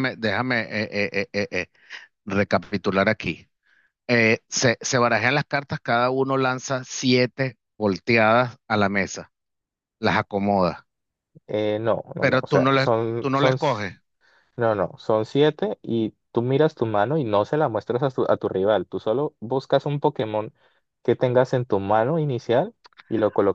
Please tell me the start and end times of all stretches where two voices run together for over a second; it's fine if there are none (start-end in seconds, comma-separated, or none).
12.2-13.9